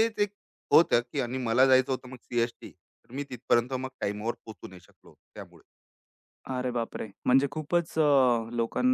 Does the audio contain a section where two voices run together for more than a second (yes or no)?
no